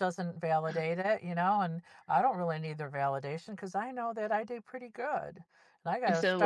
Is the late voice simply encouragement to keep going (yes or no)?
yes